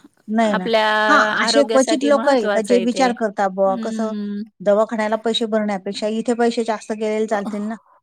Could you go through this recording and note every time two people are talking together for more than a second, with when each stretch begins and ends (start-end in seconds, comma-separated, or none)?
1.4-3.1